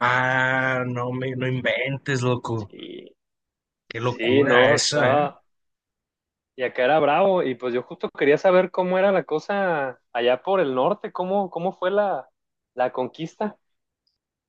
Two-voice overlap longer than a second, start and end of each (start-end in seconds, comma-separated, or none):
3.9-5.2